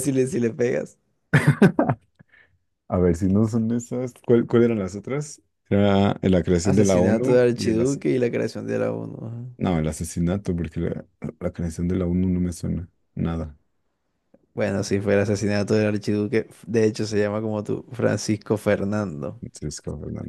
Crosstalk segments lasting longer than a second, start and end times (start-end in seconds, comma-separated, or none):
6.6-8.0